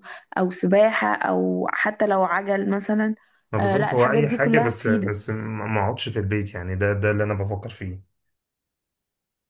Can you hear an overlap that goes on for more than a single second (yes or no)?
yes